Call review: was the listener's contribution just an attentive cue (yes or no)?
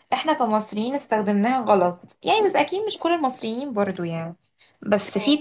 yes